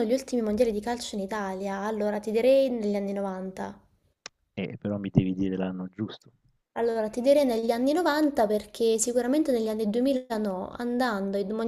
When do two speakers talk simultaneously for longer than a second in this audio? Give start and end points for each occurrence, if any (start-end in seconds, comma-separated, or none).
none